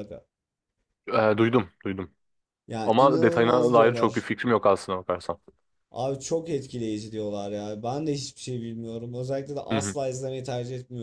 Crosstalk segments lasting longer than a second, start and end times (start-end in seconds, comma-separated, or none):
2.8-4.3